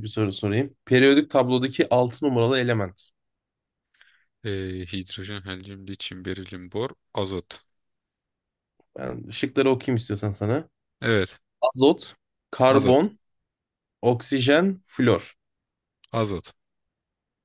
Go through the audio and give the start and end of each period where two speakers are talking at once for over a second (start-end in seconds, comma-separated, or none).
none